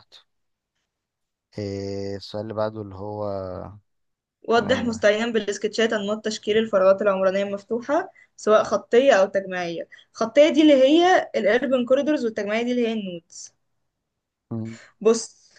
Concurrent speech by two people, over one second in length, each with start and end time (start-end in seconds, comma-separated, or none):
none